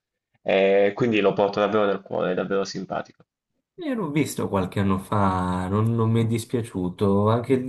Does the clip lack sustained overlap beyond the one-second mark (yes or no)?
yes